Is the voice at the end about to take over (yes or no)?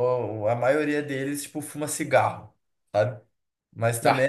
no